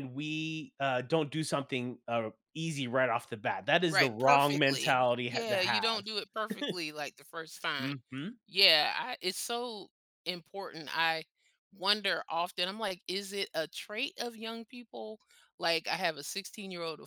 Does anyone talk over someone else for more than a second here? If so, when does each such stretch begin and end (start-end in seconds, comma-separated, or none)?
3.9-6.1